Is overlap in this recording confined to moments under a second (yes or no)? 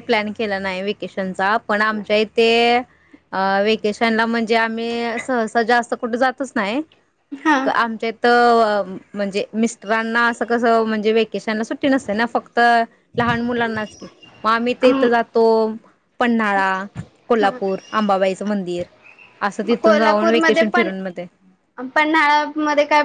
no